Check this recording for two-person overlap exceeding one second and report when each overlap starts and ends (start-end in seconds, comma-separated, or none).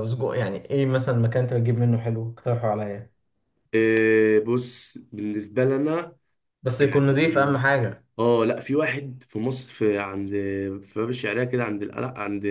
none